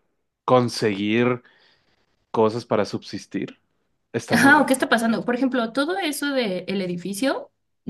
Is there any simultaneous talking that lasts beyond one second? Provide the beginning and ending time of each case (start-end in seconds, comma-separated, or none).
none